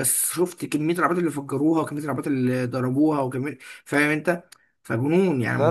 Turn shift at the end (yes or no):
yes